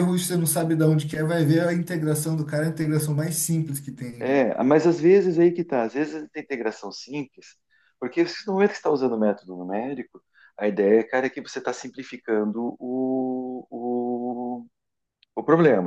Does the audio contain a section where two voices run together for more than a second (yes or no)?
no